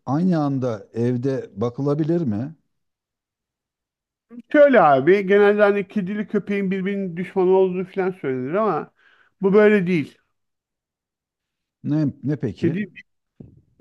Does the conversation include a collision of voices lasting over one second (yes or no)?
no